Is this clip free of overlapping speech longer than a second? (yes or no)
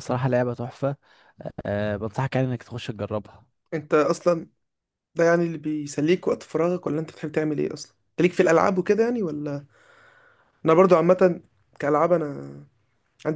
yes